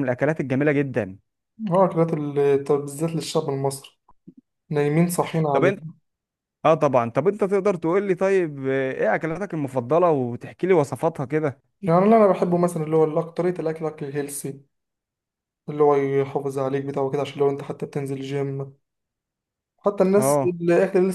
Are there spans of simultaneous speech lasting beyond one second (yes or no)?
no